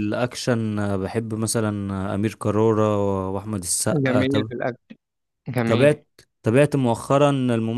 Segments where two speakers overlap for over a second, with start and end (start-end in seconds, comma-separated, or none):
none